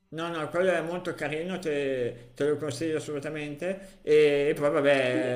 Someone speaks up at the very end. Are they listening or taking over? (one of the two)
listening